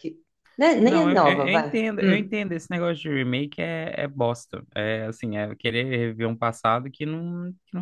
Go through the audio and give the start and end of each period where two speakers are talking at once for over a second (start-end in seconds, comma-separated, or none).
0.8-2.4